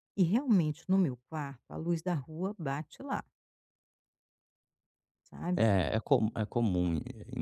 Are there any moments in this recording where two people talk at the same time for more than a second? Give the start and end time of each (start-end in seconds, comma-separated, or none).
none